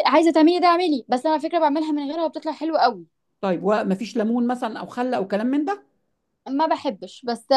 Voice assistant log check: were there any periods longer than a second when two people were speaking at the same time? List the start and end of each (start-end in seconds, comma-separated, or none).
none